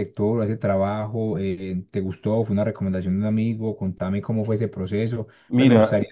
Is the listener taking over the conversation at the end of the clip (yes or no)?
yes